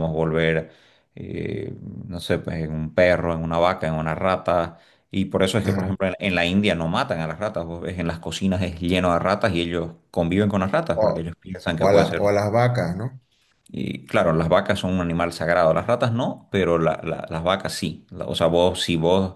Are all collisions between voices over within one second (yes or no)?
yes